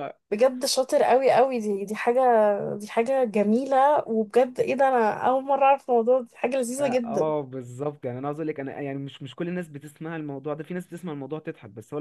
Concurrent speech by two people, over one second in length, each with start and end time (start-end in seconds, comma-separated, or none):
none